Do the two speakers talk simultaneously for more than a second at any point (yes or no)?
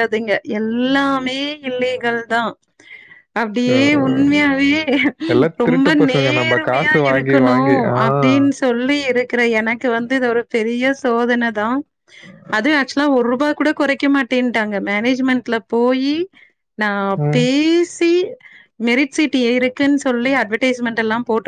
yes